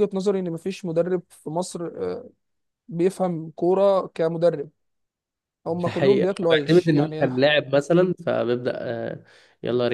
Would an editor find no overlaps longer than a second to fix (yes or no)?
no